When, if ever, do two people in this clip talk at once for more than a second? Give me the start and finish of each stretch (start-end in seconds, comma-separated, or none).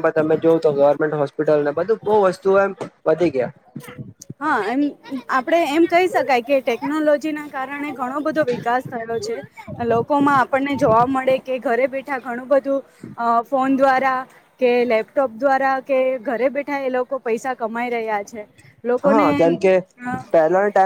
none